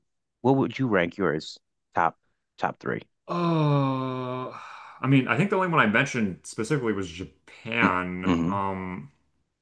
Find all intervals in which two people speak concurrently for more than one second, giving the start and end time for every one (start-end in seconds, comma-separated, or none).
none